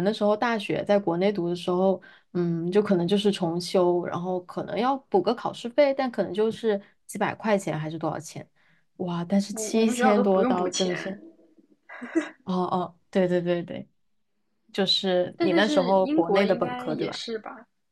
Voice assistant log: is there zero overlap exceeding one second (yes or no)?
no